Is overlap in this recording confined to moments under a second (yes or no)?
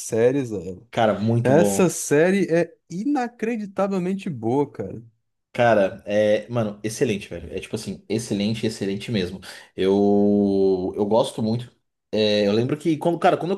yes